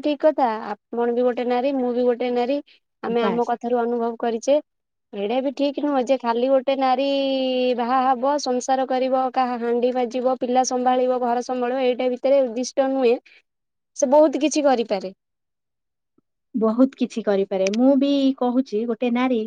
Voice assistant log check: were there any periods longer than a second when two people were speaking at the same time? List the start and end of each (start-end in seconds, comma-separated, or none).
none